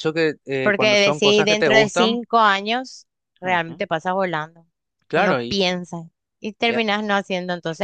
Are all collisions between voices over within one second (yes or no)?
no